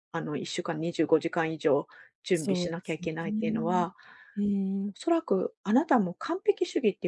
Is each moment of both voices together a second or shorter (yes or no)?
no